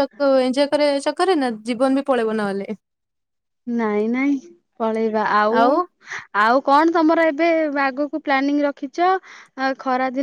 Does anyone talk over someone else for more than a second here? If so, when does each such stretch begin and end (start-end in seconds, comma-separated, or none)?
none